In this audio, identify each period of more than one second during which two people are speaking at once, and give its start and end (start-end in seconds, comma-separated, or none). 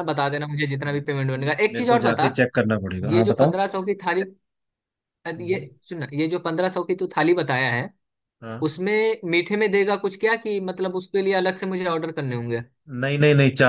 0.8-2.3